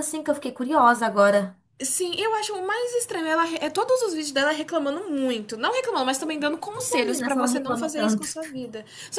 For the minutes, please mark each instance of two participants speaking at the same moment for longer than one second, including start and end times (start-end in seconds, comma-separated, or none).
6.2-8.3